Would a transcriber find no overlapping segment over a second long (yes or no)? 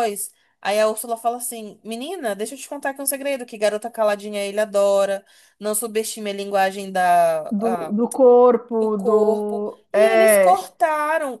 no